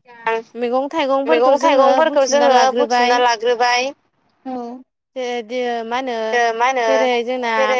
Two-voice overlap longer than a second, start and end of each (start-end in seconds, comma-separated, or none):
1.3-3.1